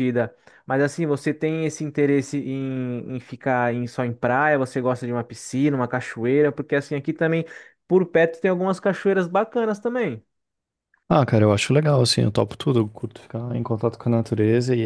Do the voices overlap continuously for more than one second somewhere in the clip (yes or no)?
no